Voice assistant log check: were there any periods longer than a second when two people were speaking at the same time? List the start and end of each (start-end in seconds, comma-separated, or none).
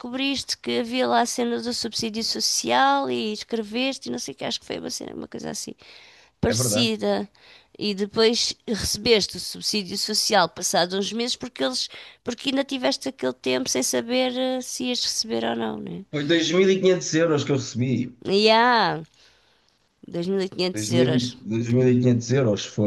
none